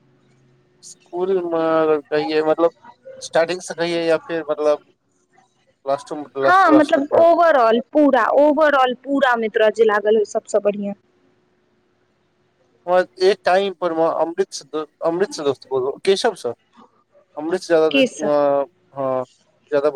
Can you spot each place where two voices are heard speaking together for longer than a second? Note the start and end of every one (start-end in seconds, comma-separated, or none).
none